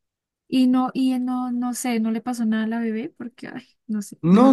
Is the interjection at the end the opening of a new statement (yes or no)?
yes